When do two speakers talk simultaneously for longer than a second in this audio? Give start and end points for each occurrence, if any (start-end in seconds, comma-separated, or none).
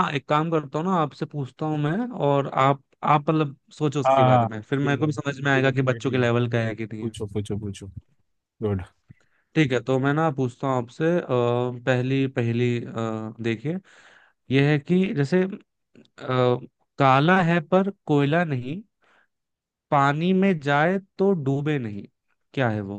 4.0-6.3